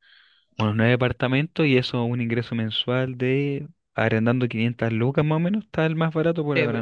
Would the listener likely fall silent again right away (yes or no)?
no